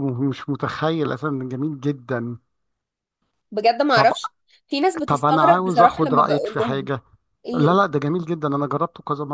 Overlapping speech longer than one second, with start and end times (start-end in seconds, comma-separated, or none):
5.1-6.9